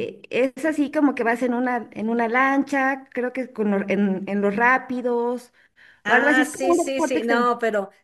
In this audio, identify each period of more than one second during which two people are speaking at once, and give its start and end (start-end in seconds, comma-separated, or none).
6.0-7.5